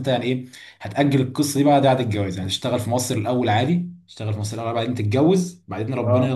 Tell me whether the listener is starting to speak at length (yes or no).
no